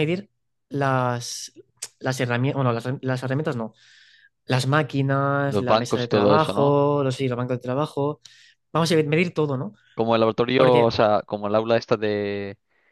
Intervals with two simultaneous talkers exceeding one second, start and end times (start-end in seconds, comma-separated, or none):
5.4-6.8